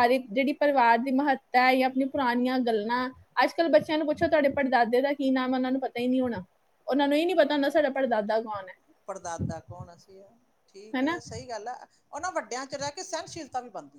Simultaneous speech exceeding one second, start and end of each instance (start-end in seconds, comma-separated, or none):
none